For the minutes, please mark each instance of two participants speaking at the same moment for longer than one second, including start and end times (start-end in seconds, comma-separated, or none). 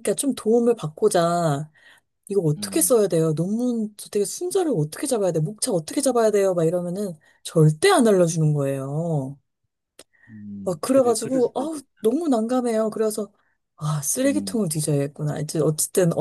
10.6-12.1